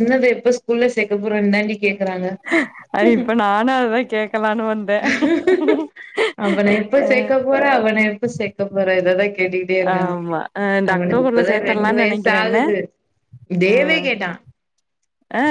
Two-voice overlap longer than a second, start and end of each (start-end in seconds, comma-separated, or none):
10.9-12.6